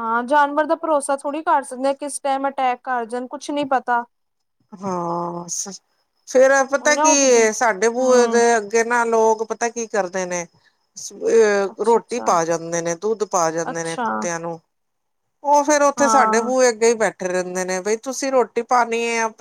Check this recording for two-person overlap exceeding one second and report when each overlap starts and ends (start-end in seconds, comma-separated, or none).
none